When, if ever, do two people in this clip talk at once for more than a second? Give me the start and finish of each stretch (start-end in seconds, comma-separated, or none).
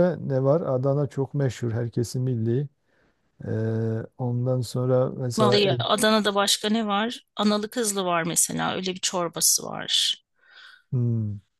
none